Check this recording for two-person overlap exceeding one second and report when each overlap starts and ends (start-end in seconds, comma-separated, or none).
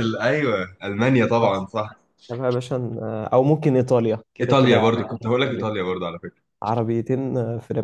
4.4-5.7